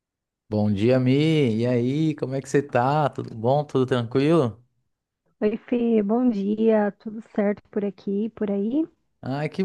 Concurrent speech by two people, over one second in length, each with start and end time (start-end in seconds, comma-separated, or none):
none